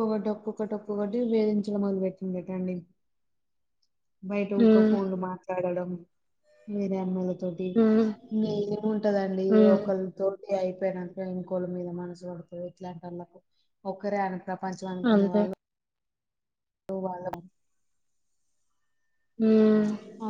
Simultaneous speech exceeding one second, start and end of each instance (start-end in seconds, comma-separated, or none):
none